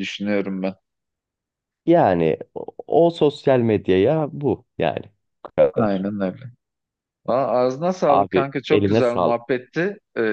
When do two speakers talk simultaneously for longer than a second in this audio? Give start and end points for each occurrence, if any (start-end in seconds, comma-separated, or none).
8.1-9.4